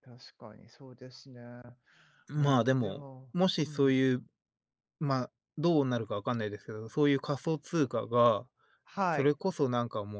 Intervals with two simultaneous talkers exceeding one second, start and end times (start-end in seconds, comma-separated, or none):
2.4-4.2